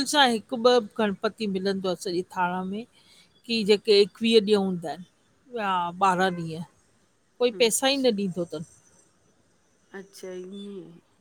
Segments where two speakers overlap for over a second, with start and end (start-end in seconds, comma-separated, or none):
none